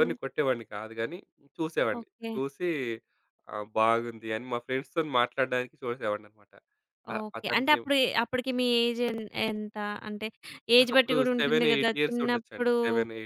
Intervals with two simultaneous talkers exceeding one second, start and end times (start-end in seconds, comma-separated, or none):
10.8-12.7